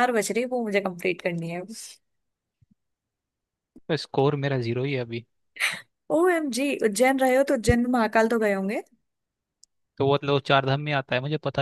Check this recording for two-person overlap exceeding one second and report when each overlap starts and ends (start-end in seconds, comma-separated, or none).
none